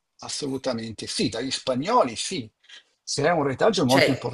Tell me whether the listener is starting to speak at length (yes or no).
no